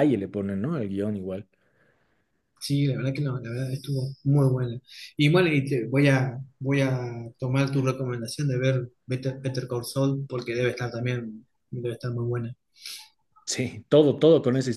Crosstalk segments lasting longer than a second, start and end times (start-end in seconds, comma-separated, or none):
none